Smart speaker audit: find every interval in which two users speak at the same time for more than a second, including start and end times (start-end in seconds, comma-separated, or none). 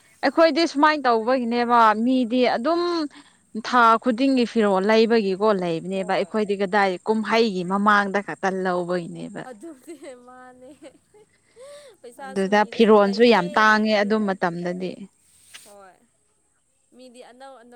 12.2-14.4